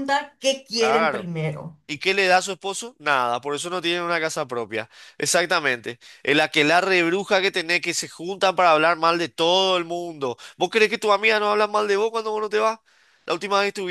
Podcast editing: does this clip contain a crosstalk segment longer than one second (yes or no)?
no